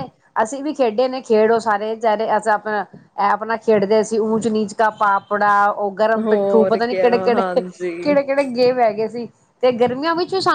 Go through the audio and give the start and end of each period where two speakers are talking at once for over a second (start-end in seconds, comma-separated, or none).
6.2-8.1